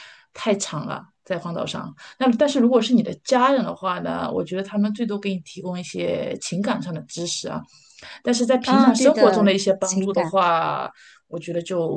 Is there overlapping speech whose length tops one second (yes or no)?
yes